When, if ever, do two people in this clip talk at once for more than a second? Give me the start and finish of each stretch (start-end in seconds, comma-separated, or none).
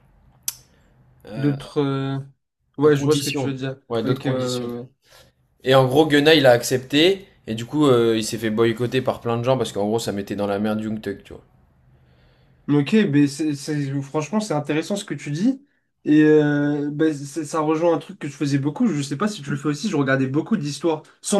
2.9-4.7